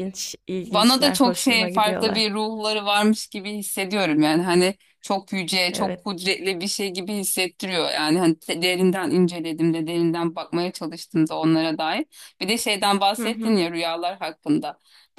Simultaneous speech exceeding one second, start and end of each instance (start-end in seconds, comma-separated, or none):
0.7-2.3